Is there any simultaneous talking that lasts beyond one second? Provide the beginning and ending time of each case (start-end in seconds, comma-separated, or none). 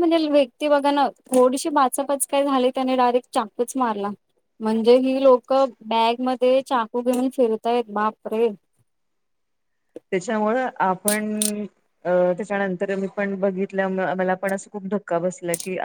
none